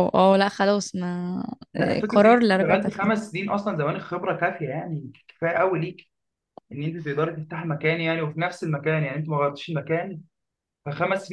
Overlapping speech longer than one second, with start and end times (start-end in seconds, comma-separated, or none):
1.8-3.1